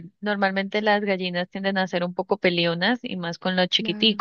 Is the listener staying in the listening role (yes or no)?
yes